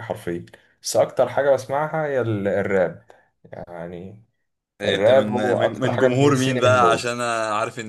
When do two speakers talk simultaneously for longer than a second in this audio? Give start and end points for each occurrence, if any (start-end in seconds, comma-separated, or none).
4.8-7.1